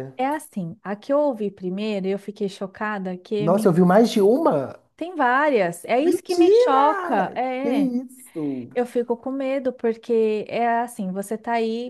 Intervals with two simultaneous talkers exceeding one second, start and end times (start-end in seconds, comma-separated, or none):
6.0-7.9